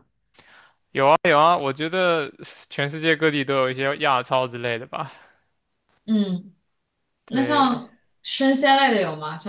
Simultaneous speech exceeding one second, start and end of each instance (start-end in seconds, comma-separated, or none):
none